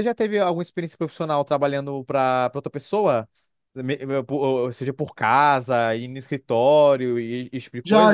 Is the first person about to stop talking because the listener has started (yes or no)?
yes